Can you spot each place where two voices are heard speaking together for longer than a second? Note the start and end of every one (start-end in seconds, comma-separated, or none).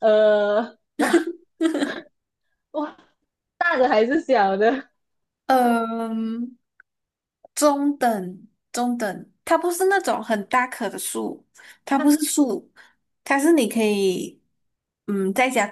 none